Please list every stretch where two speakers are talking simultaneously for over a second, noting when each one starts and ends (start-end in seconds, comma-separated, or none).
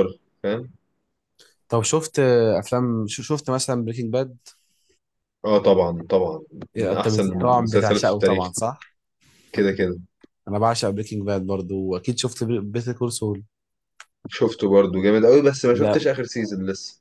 6.8-8.5